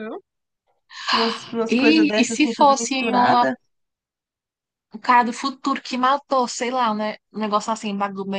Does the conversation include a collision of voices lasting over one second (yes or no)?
yes